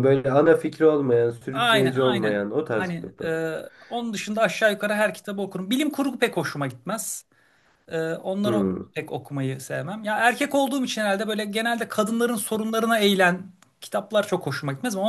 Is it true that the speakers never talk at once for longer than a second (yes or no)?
no